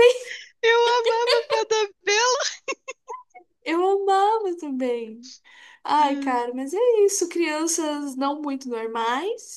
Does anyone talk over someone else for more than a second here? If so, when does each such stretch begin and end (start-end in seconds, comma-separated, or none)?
none